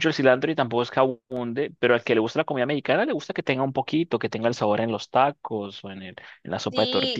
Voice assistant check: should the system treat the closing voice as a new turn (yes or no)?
yes